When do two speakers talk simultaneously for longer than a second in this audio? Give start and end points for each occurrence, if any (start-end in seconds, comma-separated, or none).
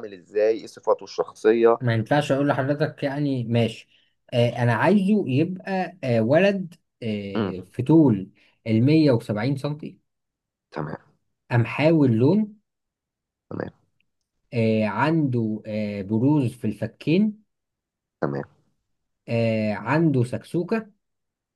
none